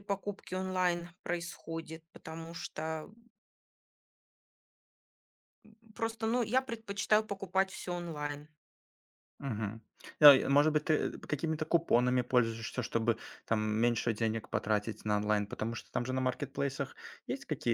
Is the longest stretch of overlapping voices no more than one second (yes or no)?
yes